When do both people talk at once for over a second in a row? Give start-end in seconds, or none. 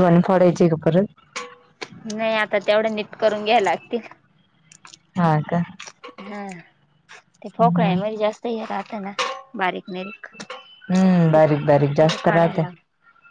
11.3-12.6